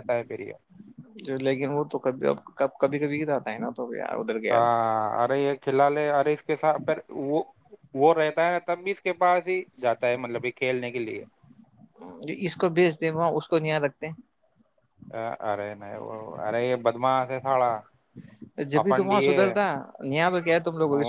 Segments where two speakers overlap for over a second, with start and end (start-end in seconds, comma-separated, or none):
none